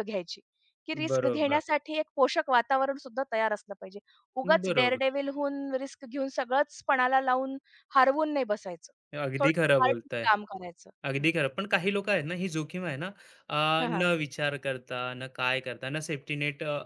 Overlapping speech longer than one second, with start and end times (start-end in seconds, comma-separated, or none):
none